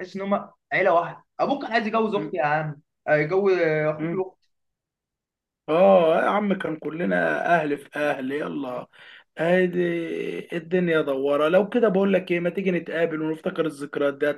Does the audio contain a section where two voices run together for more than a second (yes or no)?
no